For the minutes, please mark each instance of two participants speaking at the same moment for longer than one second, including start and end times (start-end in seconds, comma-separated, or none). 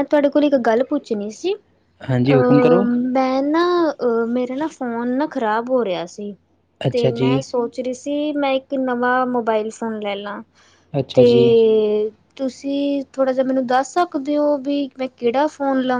none